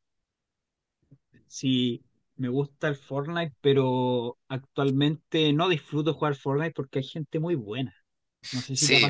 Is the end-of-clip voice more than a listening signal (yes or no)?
yes